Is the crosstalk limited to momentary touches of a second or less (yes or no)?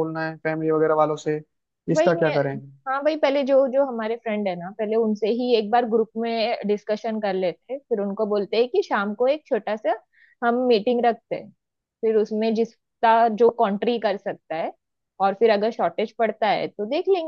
yes